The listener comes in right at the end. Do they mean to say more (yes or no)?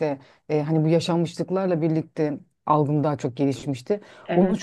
no